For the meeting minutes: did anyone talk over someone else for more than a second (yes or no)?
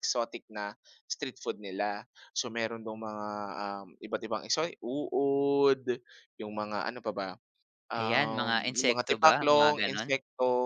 yes